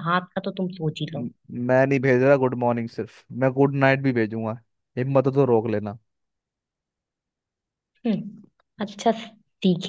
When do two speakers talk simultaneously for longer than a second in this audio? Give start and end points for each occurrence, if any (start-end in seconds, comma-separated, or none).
none